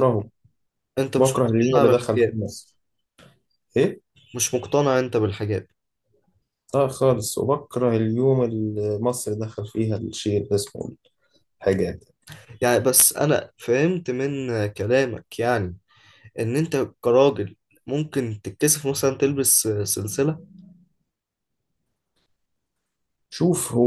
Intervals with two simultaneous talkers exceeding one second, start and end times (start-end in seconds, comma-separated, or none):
1.2-2.4